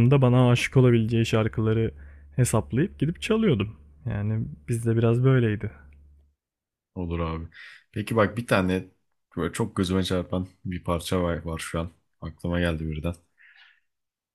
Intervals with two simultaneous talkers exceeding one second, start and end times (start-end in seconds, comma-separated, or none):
none